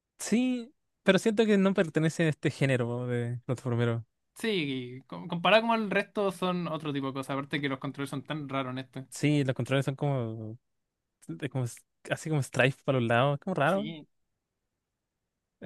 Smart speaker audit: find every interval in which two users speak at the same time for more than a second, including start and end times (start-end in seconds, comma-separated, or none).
none